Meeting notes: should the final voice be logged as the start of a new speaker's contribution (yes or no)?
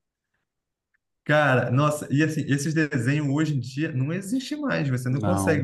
no